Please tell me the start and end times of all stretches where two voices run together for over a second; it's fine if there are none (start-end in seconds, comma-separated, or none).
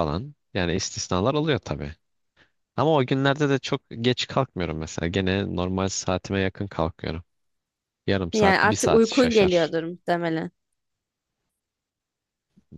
8.3-9.7